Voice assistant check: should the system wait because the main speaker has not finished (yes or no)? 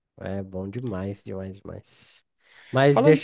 yes